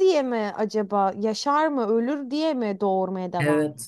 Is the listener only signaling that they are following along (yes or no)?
no